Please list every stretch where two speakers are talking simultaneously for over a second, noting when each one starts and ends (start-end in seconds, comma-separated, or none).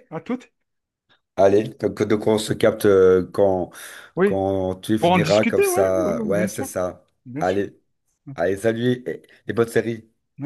5.0-6.7